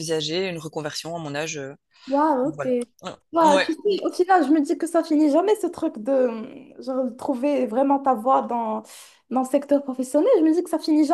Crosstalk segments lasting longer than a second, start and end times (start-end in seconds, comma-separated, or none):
none